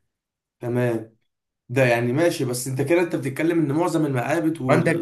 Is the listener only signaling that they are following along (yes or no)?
no